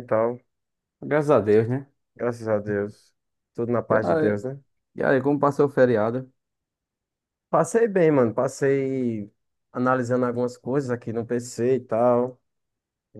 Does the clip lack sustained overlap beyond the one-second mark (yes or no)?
yes